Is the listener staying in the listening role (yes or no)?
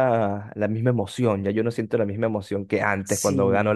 yes